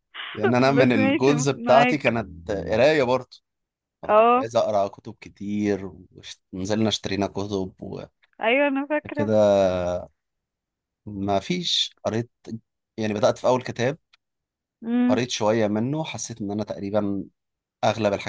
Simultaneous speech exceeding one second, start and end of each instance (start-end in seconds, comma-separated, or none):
0.7-2.2